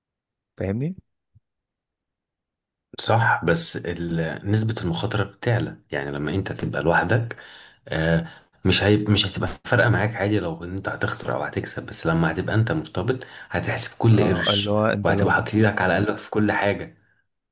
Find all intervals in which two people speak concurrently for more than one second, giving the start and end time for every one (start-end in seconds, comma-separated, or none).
14.1-15.5